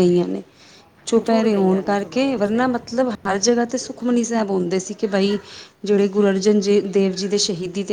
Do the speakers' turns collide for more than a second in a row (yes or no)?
yes